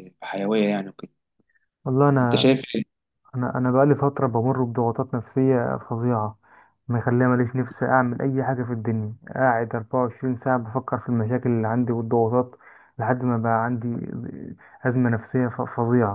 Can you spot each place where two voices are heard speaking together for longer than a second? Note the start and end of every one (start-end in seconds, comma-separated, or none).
none